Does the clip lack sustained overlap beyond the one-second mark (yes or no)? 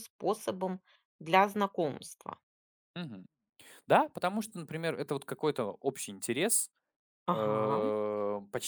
yes